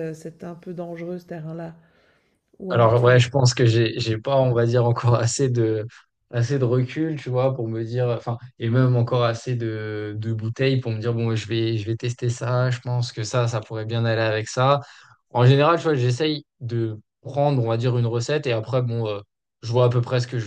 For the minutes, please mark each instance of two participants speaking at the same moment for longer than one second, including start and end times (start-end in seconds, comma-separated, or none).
none